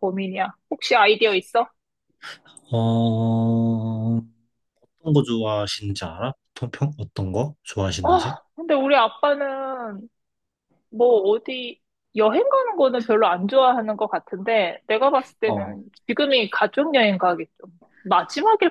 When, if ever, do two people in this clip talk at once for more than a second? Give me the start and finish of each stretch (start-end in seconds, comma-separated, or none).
none